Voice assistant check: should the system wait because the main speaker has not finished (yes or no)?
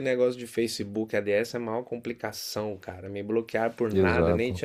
yes